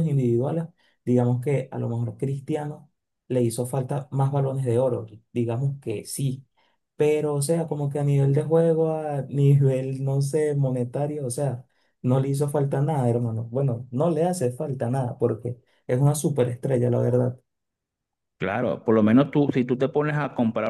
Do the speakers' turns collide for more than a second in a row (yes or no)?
no